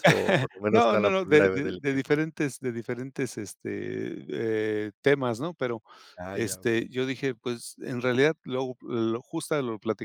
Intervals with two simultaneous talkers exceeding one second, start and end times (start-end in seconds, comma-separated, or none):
0.7-2.2